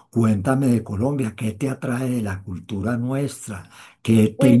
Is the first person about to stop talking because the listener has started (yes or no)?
no